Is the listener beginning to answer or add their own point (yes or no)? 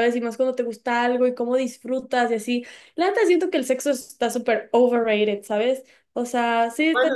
yes